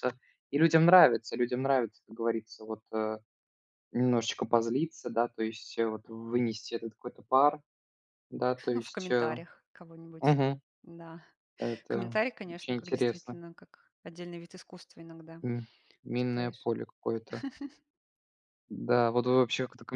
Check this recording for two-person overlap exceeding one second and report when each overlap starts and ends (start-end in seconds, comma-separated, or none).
11.9-13.4